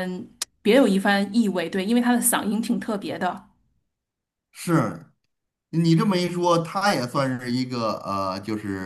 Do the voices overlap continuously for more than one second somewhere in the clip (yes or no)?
no